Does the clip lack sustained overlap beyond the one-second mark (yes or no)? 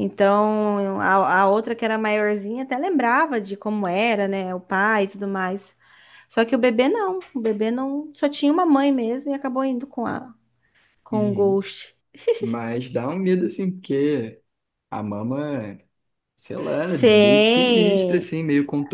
no